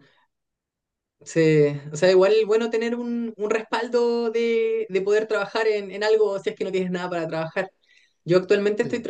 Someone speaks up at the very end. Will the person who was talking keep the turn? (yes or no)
yes